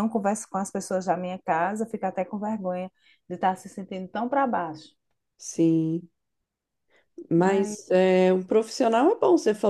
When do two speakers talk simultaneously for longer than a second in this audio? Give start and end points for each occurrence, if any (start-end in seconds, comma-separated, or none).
none